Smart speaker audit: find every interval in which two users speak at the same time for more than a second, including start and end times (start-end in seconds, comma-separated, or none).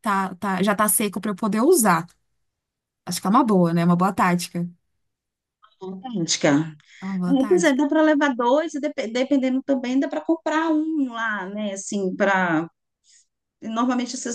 none